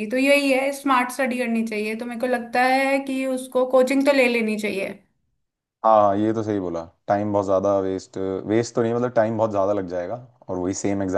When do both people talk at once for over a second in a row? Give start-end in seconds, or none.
none